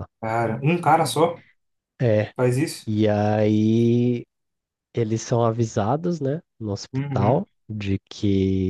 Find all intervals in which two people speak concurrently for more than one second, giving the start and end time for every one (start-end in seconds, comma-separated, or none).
none